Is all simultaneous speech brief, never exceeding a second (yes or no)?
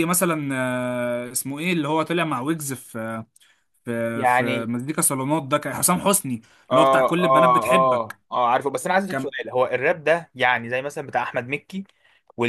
no